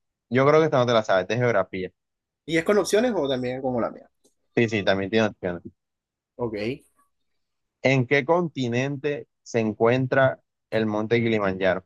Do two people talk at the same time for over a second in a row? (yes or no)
no